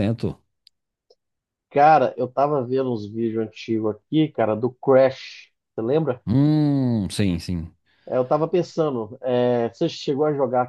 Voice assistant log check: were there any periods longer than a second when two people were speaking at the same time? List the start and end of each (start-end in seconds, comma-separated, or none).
none